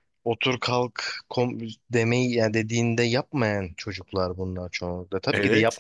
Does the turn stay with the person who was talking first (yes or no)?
yes